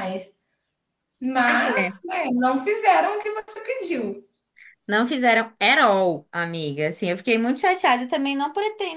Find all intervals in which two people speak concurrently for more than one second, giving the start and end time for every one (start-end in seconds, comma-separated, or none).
none